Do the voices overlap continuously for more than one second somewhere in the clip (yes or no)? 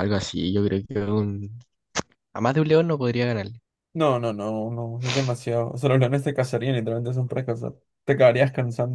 no